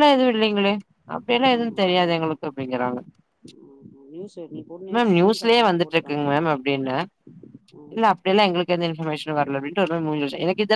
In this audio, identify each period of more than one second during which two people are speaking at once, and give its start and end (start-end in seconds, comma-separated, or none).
4.9-6.6